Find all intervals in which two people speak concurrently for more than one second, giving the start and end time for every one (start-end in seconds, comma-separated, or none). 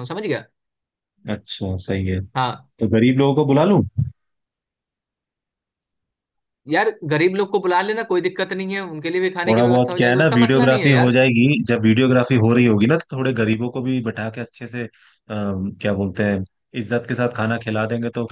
9.5-11.2